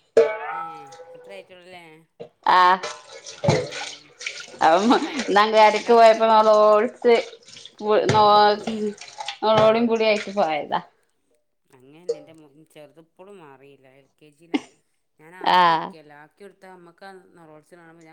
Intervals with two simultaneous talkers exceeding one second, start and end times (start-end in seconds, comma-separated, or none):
5.1-6.5